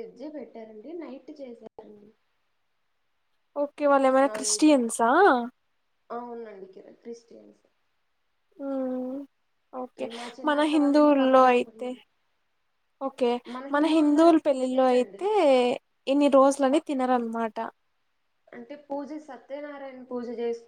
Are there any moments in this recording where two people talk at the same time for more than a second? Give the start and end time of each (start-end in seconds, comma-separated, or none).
10.5-11.9, 13.8-15.2